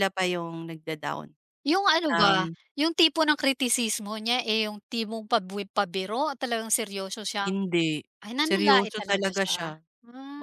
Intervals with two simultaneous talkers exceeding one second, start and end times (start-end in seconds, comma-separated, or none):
8.4-9.8